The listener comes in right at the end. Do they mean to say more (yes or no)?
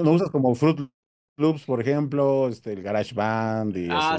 yes